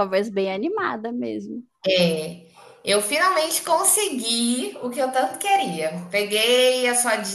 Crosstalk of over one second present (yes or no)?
no